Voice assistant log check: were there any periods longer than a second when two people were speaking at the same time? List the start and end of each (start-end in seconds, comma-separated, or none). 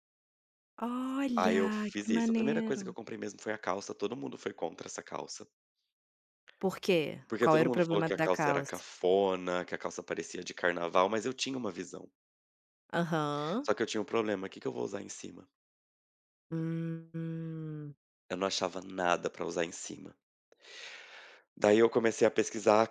1.4-2.9, 7.4-8.8